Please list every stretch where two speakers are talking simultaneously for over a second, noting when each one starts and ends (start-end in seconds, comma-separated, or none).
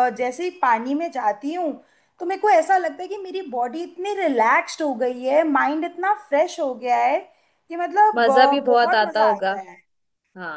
8.2-9.5